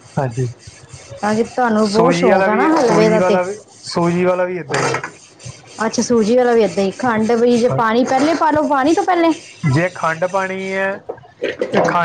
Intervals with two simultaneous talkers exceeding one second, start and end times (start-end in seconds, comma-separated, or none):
1.9-3.4